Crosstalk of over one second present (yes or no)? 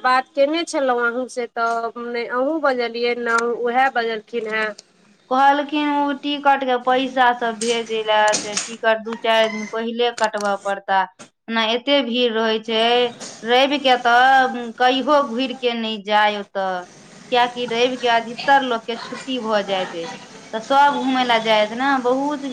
no